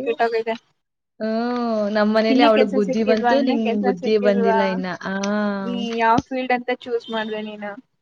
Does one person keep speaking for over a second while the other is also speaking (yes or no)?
yes